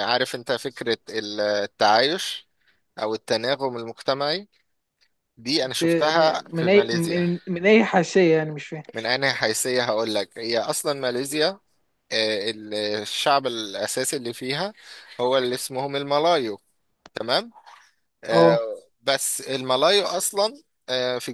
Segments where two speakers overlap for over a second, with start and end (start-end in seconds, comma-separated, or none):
5.6-7.2